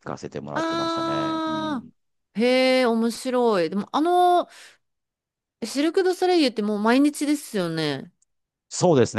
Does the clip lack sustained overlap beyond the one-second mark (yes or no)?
no